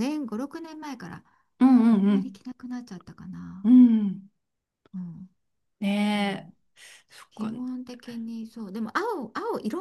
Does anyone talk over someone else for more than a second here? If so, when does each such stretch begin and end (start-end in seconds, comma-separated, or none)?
none